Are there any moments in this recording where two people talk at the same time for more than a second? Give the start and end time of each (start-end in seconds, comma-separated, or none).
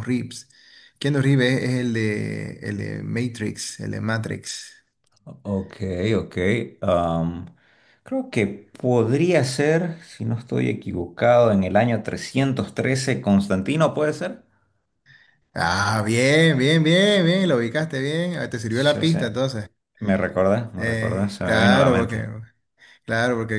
20.8-22.2